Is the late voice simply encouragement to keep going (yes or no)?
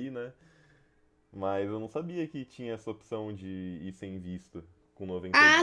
no